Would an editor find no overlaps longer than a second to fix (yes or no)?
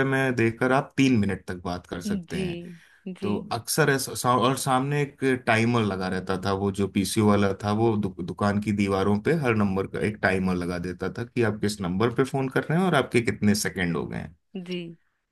yes